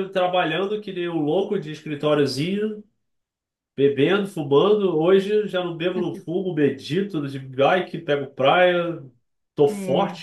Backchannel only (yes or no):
yes